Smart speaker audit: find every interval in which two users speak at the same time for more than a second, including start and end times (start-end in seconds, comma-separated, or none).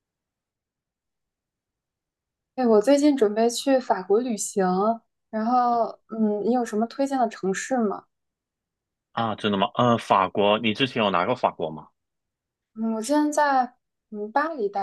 none